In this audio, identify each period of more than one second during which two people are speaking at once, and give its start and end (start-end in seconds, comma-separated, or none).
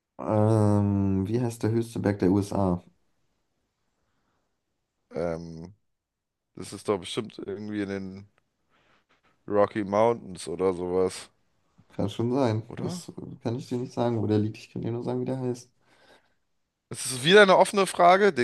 none